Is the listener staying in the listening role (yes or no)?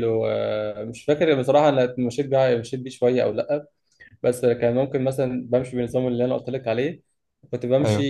yes